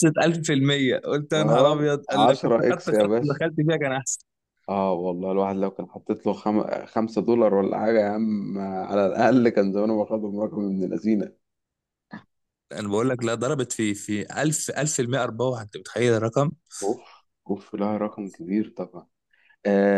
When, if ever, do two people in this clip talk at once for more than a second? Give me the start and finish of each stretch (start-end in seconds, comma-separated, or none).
1.3-3.4